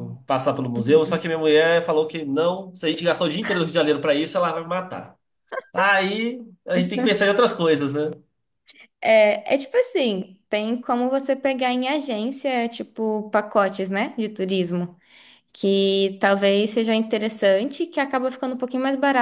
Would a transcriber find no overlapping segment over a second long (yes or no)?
yes